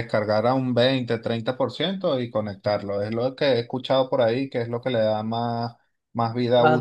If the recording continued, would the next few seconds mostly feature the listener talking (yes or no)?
yes